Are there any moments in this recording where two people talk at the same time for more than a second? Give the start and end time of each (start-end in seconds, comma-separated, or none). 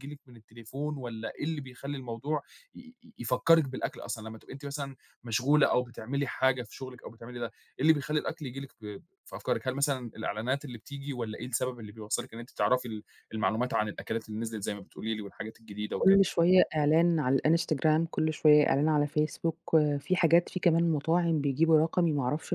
none